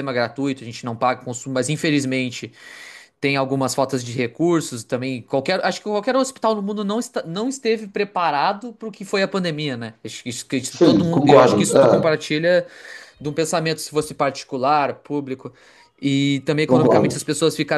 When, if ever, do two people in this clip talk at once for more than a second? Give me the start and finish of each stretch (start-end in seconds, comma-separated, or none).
10.8-12.2